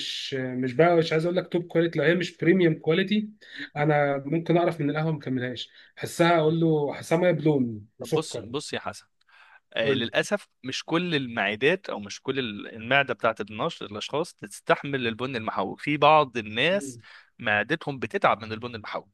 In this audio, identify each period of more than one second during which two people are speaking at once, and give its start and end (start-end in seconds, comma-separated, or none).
none